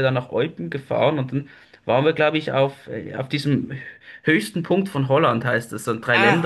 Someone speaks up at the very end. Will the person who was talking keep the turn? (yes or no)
no